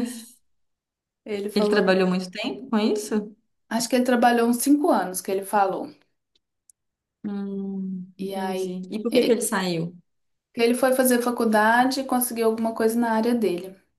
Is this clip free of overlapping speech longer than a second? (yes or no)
no